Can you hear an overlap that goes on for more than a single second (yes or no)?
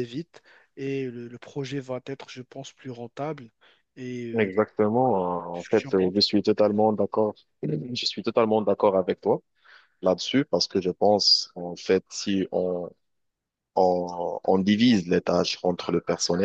no